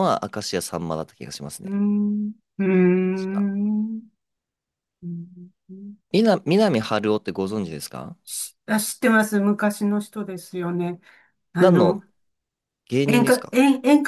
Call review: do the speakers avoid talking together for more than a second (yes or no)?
yes